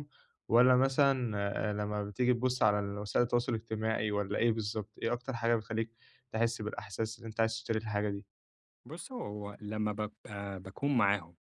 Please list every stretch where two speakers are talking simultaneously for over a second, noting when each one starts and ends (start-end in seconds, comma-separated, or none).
none